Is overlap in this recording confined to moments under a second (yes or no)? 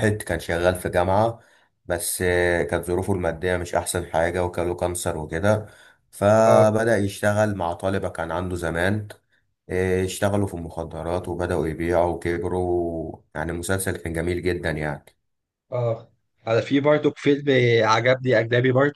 yes